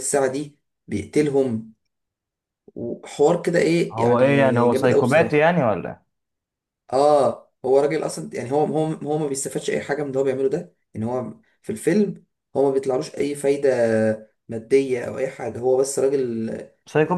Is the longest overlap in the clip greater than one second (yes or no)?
yes